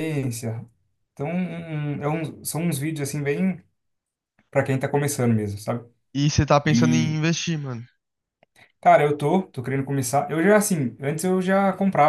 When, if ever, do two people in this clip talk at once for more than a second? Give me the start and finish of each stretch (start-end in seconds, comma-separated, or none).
none